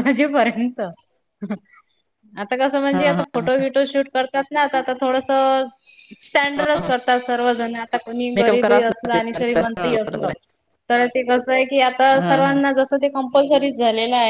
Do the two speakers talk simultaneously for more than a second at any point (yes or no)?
yes